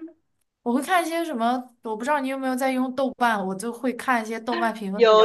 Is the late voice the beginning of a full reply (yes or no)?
yes